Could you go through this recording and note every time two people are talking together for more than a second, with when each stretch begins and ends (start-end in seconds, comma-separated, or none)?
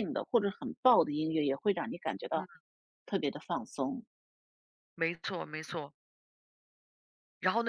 none